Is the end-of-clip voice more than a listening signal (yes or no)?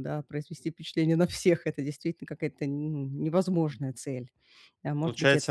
yes